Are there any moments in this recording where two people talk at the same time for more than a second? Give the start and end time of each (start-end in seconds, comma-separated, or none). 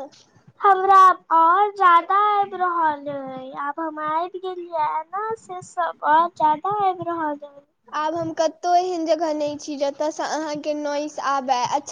none